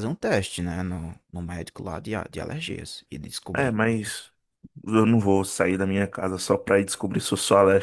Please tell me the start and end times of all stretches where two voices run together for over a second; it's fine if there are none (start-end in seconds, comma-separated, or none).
none